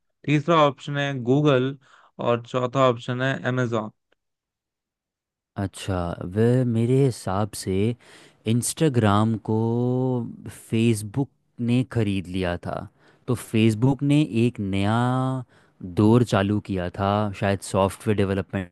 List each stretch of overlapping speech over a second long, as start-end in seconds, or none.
none